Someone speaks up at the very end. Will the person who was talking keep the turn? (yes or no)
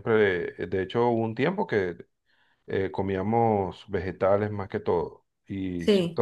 yes